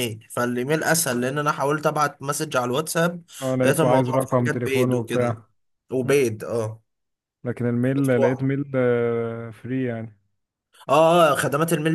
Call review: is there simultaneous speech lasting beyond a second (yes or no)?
yes